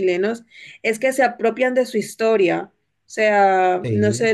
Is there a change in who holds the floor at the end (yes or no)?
no